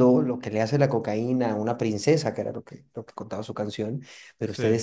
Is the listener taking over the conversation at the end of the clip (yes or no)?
no